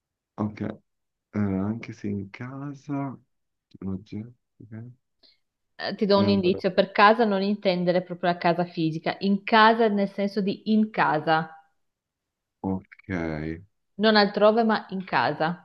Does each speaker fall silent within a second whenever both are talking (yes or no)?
yes